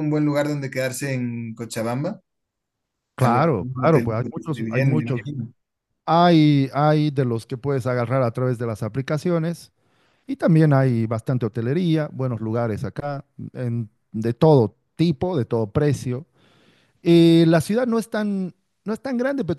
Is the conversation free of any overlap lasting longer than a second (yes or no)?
no